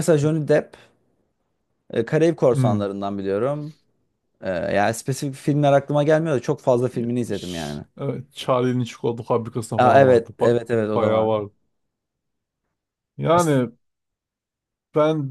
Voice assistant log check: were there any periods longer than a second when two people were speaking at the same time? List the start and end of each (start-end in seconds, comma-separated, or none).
9.8-11.3